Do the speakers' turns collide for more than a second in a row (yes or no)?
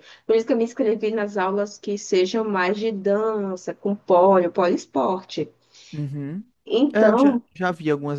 no